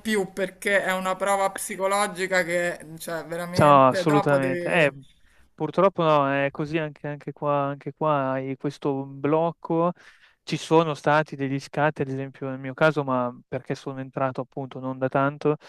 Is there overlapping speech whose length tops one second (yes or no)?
yes